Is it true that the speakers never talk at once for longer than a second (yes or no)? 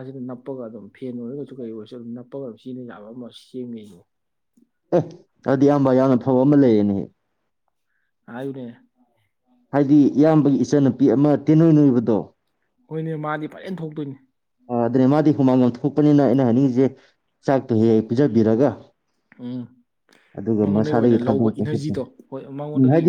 no